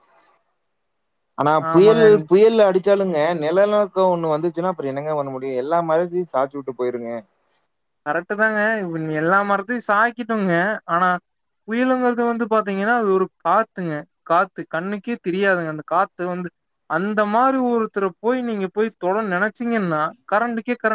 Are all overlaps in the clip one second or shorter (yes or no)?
yes